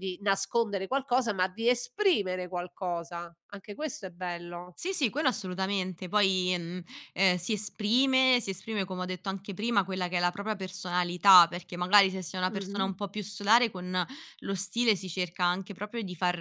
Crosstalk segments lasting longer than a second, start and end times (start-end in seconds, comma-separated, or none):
none